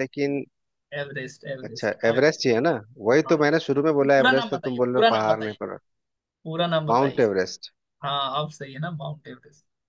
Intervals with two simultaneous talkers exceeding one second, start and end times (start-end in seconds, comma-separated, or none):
4.0-5.5